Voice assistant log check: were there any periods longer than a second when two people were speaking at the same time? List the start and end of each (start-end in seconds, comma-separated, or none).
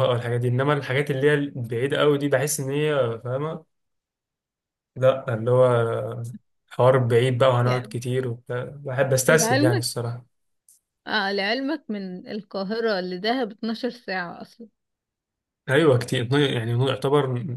none